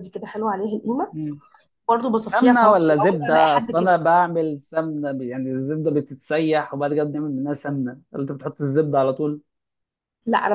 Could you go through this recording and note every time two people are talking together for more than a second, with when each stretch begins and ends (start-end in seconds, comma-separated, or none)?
2.2-3.9